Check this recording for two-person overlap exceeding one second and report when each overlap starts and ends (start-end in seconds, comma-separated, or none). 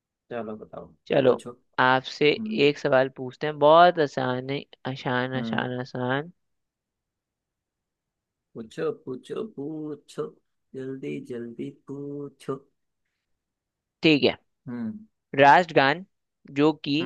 none